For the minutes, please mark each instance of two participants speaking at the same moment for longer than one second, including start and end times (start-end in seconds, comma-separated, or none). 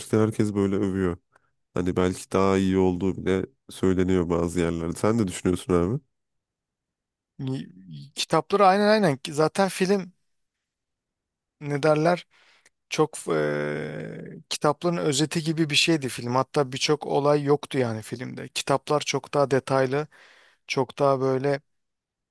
none